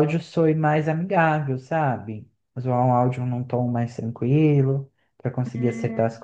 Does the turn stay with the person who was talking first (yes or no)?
no